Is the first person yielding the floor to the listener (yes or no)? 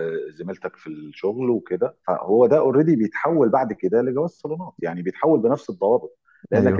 no